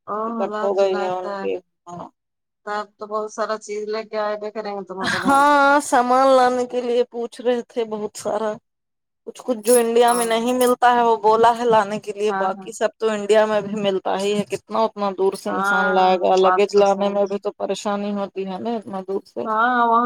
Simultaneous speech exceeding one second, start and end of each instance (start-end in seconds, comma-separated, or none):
15.5-17.4